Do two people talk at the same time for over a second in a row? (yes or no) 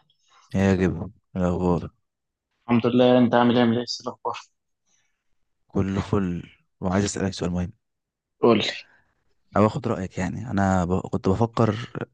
no